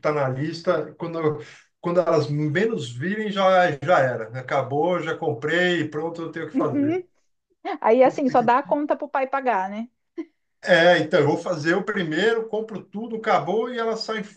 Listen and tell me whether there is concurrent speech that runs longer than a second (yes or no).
no